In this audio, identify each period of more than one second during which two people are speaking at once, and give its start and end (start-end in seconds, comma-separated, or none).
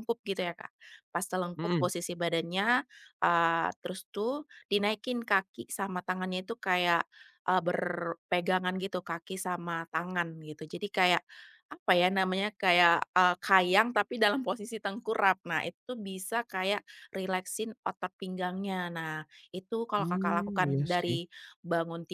20.0-21.2